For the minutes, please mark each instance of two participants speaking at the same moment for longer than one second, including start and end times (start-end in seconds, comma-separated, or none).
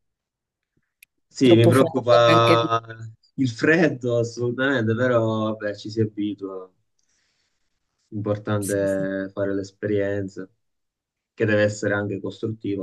1.4-2.7